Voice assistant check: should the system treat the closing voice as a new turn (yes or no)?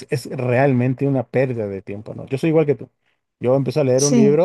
no